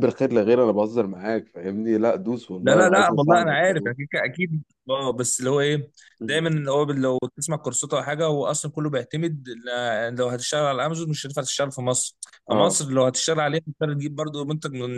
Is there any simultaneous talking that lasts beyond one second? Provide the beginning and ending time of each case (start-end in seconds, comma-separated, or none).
2.6-4.0